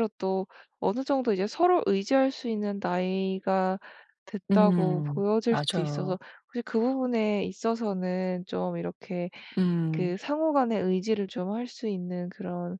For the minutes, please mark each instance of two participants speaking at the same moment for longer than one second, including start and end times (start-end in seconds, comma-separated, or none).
4.5-6.2